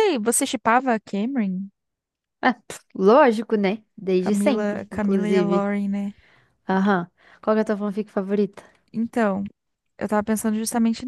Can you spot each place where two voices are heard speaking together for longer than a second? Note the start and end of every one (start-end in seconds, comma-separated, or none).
4.2-5.7